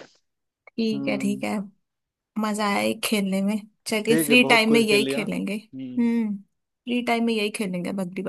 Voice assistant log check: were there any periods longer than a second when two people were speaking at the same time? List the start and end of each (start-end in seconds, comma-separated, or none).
4.1-6.1